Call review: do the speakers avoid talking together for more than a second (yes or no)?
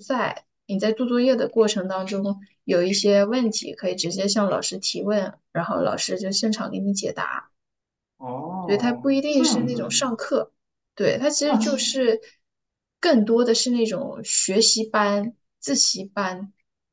no